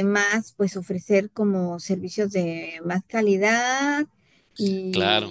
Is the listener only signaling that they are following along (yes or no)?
yes